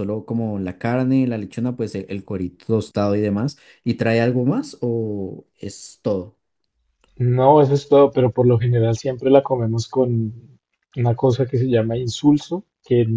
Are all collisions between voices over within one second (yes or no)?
yes